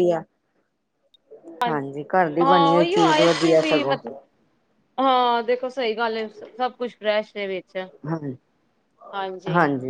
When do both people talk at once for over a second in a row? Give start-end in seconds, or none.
2.4-3.9